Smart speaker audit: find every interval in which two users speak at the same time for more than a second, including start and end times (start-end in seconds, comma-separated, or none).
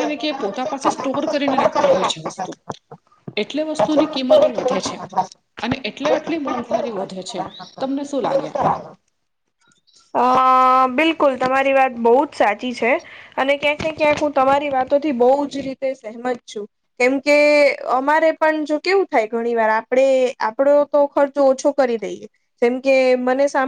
none